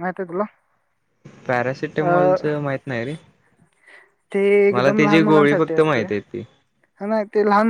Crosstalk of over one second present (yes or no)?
yes